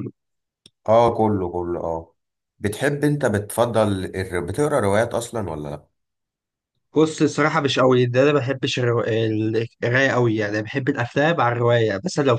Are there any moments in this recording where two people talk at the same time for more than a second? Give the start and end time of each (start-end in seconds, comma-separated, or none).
none